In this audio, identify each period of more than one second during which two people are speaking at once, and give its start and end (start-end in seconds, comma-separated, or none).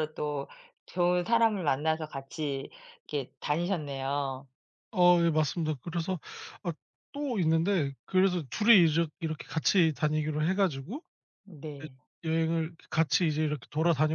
none